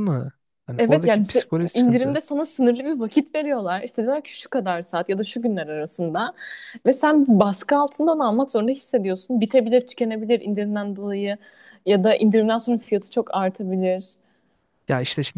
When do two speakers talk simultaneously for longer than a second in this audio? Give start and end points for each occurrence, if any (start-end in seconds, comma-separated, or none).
0.8-2.2